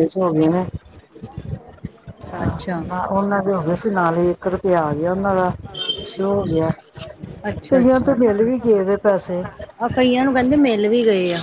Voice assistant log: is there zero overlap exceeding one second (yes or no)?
yes